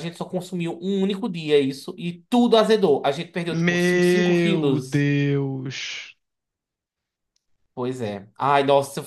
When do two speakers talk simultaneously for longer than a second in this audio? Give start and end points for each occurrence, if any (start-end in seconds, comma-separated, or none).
3.5-5.1